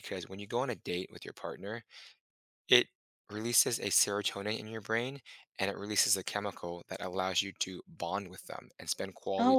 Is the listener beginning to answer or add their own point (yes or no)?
no